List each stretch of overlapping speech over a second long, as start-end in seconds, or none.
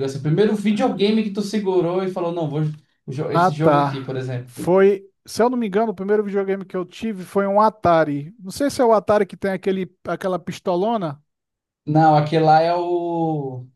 3.3-4.7